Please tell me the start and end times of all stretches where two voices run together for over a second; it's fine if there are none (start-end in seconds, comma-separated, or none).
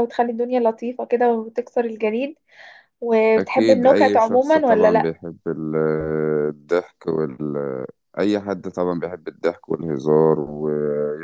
3.4-5.1